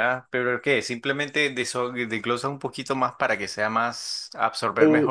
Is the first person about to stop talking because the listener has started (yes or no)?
no